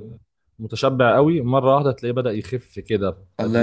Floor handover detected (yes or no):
yes